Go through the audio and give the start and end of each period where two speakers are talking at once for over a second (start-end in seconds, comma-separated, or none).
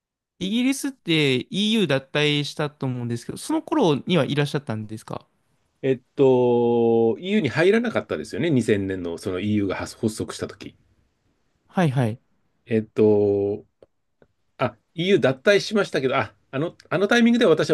none